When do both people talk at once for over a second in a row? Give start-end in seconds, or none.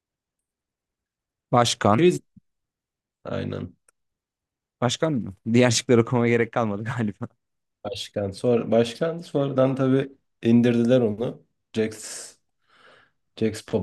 none